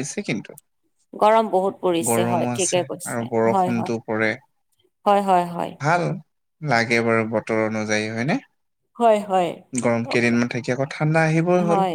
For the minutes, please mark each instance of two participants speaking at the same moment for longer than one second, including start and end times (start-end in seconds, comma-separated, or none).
2.1-3.9